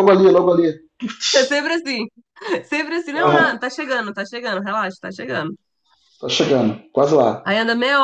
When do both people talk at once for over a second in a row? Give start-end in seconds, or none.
none